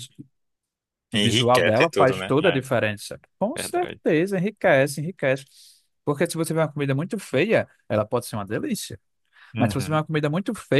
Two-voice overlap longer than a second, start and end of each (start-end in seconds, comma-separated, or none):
1.1-2.6